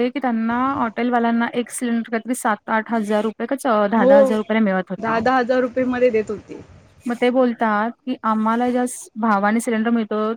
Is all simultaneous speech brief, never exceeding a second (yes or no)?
yes